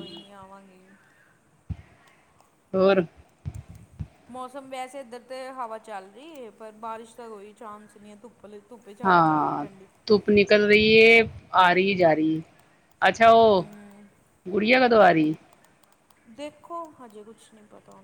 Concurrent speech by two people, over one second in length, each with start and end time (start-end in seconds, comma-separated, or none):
none